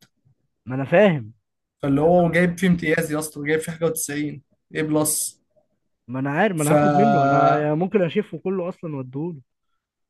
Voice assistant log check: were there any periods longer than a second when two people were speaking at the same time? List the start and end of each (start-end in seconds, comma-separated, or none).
none